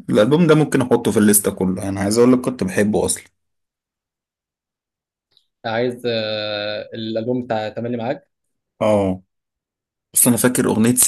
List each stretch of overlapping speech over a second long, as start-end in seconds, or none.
none